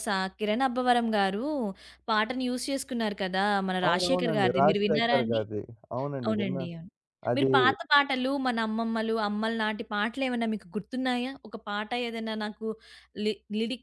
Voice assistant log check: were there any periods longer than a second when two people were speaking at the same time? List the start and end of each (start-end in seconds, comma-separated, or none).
3.9-5.4